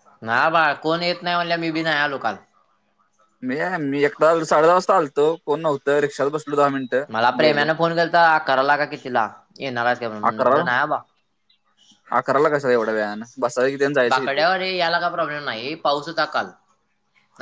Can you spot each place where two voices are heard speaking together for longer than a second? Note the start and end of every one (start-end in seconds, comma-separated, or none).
none